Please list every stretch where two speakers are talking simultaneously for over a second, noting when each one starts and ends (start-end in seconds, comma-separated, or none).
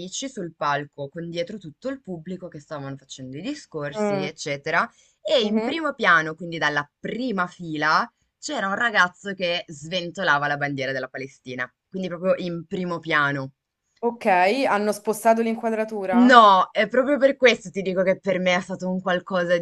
none